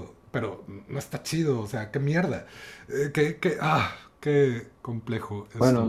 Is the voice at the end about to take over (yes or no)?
yes